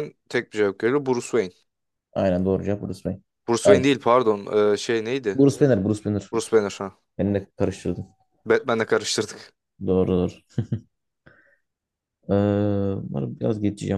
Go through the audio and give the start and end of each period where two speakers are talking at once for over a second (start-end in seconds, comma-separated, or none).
none